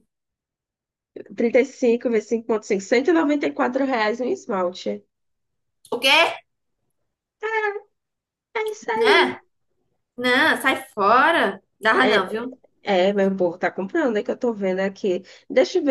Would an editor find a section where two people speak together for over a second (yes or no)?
no